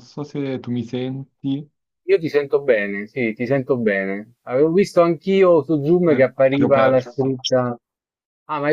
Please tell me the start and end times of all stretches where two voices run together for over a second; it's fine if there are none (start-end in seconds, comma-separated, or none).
6.0-7.4